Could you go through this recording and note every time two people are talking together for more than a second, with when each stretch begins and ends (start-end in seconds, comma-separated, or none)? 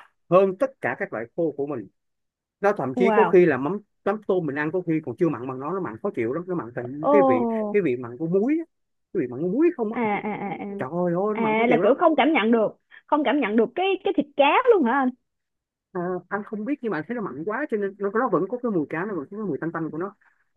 none